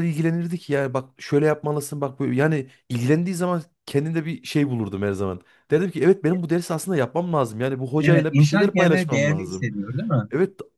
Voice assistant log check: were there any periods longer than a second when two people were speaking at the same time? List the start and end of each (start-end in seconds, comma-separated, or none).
8.0-9.7